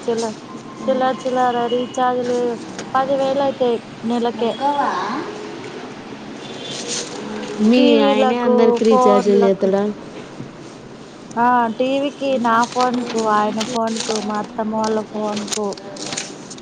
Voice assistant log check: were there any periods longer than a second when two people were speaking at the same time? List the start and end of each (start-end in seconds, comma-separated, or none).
7.8-9.7